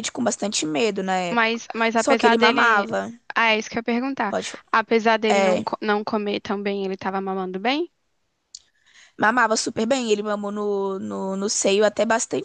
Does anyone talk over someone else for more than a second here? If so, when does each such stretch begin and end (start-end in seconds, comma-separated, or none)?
1.3-2.9